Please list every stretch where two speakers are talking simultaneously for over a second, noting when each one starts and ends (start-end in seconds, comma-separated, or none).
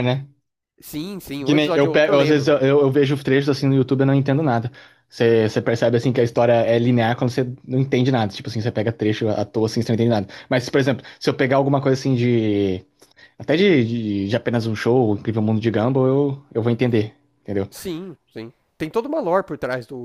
1.4-2.7